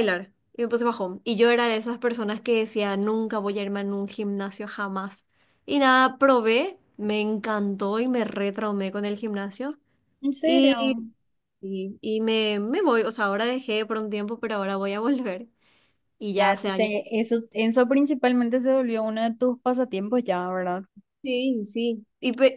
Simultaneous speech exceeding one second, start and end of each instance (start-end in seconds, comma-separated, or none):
none